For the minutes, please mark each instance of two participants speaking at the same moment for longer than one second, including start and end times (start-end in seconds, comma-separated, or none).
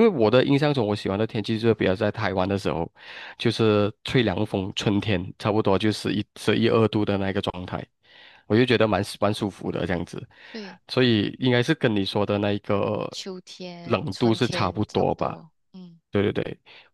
13.8-15.4